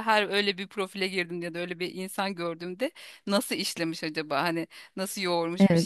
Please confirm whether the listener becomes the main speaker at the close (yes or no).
no